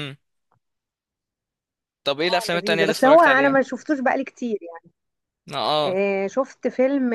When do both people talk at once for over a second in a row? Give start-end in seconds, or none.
2.2-3.6